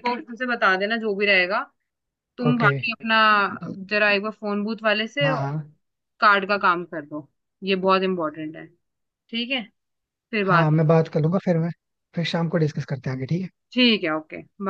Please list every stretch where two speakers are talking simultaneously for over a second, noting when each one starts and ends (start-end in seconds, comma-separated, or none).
none